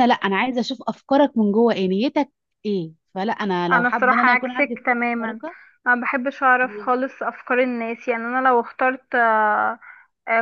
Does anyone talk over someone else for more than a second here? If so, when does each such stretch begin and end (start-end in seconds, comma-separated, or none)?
3.7-5.4